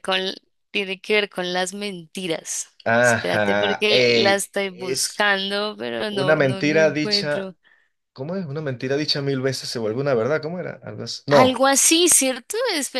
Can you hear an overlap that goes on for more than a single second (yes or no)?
yes